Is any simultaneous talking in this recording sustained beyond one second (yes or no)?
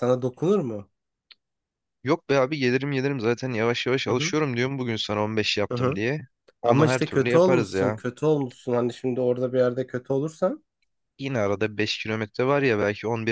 yes